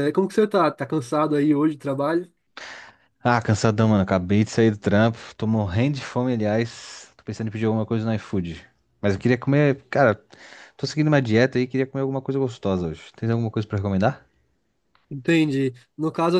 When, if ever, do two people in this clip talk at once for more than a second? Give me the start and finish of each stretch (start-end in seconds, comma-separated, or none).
none